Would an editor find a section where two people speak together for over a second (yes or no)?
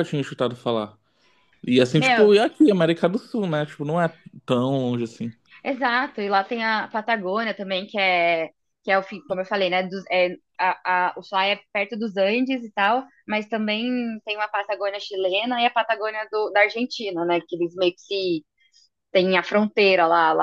no